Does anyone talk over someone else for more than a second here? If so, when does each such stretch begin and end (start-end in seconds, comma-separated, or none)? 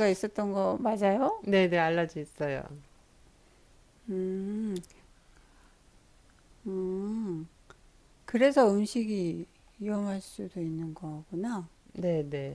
none